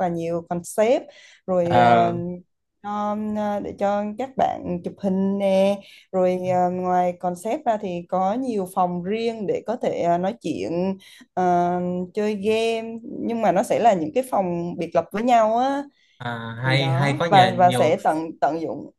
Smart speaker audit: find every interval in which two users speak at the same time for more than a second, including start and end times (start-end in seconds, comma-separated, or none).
16.6-17.9